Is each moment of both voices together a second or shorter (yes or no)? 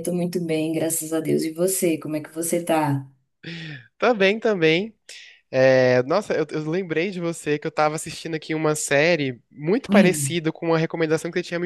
yes